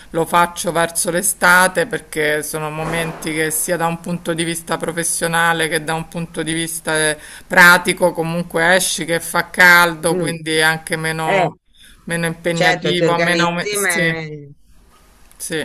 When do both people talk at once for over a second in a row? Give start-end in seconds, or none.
12.5-14.0